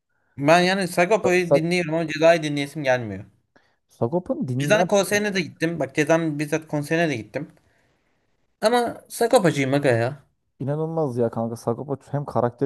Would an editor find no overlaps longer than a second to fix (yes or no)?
yes